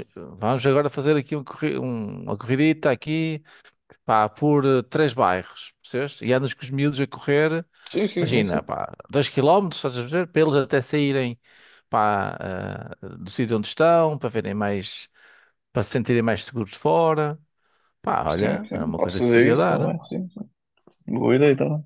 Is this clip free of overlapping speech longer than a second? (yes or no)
no